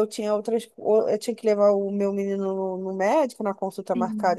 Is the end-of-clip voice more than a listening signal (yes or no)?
no